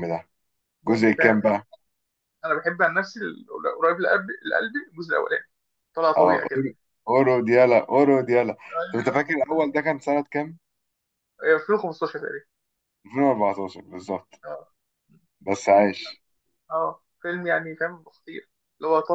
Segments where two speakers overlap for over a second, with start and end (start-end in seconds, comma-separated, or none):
none